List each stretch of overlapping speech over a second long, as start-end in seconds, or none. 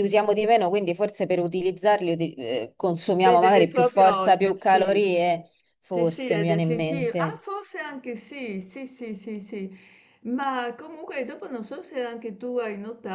3.1-5.0, 5.9-7.4